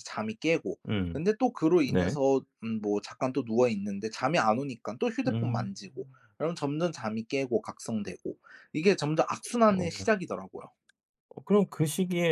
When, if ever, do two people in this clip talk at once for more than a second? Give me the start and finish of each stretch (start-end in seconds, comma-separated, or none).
none